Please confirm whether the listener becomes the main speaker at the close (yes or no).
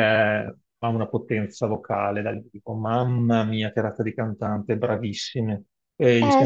no